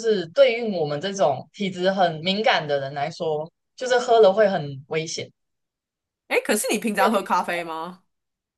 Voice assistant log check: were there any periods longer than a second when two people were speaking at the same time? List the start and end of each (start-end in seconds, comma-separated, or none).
none